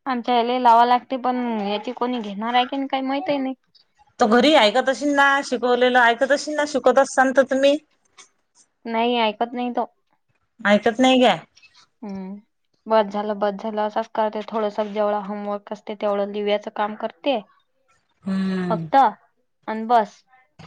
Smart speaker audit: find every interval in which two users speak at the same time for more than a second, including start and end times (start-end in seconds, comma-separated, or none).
none